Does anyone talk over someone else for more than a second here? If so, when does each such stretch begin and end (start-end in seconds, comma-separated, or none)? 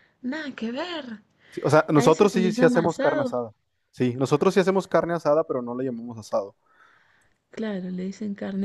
1.9-3.4